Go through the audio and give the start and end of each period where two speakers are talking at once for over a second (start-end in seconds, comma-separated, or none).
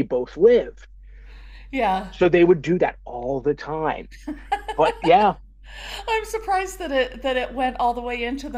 none